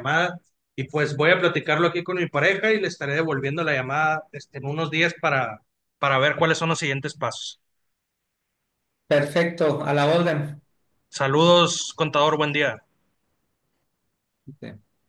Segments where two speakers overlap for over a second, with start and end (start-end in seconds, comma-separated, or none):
none